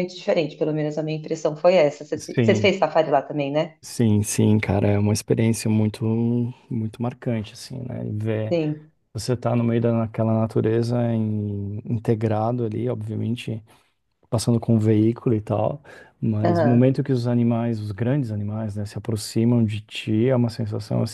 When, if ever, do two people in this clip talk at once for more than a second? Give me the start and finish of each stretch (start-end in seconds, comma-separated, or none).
none